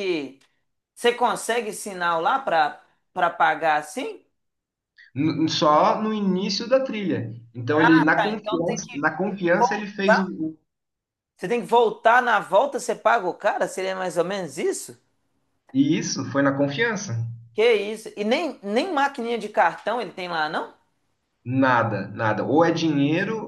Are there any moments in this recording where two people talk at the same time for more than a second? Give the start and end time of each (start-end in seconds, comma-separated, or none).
7.7-10.3